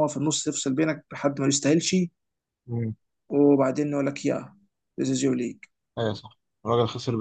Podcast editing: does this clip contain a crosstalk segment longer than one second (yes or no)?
no